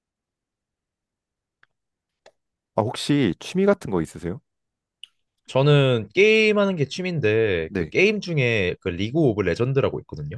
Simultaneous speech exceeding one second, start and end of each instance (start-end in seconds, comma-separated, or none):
none